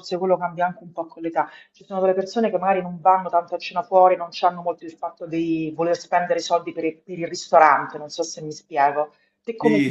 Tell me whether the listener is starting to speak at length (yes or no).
yes